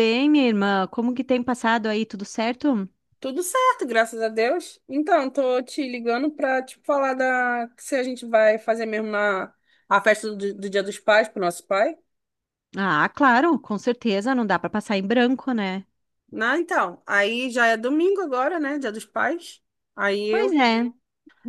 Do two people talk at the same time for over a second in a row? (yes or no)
no